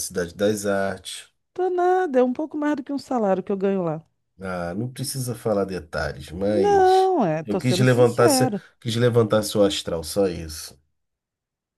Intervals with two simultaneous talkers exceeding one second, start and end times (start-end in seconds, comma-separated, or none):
6.5-8.6